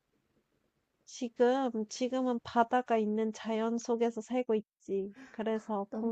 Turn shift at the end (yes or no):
no